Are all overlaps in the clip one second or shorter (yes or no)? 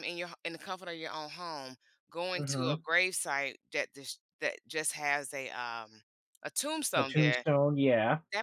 yes